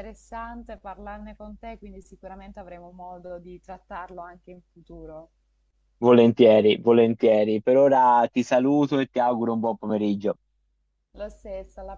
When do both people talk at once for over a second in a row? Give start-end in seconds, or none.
none